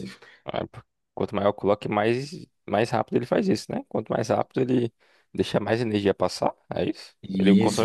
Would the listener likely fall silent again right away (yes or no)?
no